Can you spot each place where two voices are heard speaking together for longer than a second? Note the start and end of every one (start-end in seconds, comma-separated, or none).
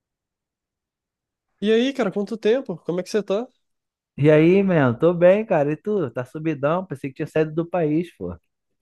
none